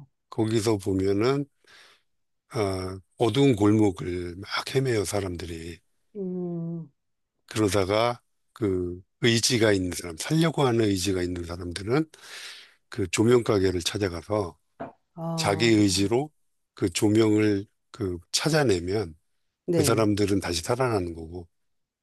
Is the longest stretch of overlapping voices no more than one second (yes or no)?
yes